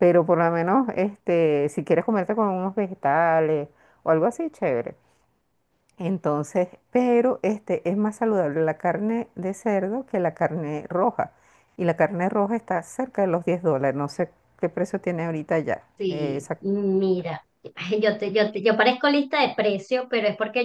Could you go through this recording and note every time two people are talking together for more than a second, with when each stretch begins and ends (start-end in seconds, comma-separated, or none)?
none